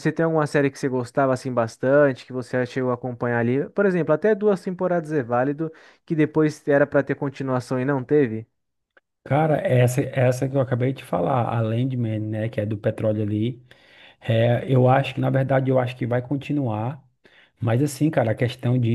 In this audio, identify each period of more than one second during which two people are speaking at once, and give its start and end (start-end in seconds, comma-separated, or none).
none